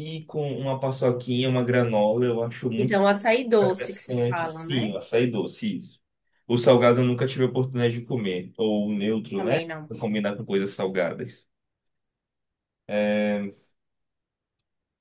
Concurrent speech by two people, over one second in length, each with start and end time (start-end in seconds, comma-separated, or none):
3.6-4.9